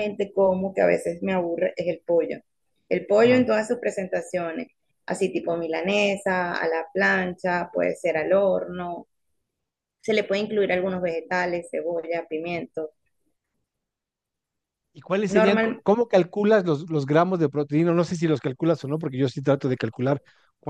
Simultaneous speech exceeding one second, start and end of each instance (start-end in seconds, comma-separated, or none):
none